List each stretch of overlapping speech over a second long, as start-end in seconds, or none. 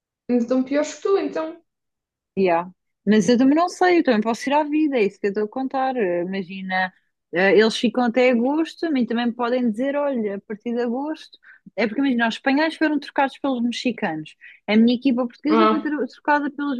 none